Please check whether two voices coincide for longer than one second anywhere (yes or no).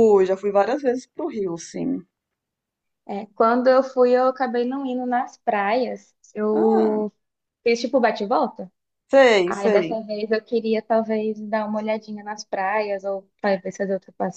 no